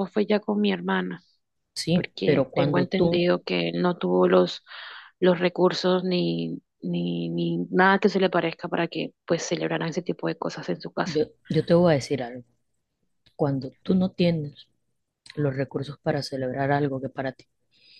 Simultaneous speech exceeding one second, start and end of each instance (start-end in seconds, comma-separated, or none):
1.9-3.3